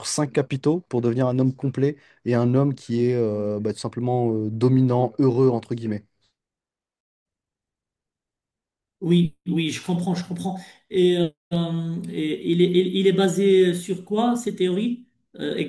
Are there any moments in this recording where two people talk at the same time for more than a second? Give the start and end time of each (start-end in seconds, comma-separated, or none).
none